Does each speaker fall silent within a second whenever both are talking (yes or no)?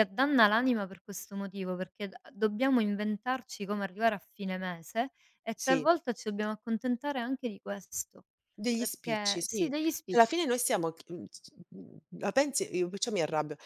no